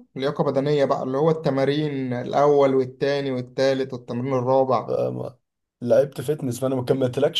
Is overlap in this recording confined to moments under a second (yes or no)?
yes